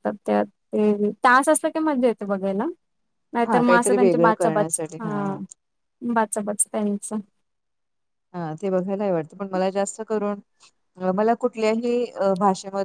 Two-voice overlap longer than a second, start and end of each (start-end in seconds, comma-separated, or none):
3.4-5.0